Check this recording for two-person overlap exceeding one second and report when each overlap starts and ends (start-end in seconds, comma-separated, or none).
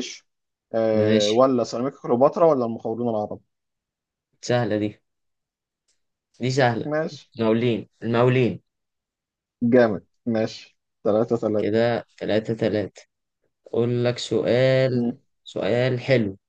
none